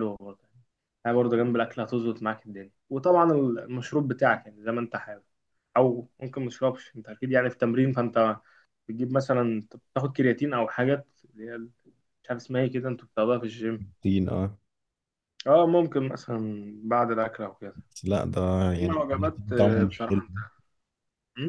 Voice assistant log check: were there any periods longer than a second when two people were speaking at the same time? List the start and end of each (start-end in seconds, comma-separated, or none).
18.8-20.2